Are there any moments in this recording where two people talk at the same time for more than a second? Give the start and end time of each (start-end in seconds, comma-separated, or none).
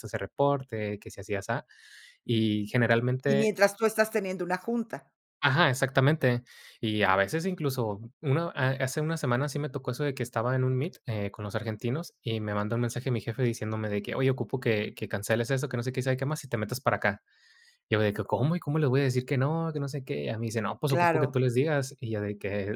none